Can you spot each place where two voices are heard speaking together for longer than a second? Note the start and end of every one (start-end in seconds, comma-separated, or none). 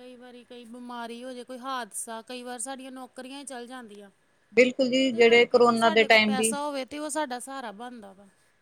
5.0-6.5